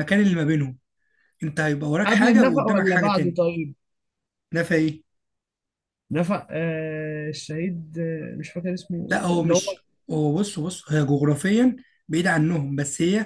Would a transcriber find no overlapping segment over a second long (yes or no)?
no